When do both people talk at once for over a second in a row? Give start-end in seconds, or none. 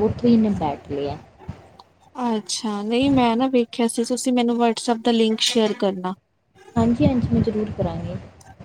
none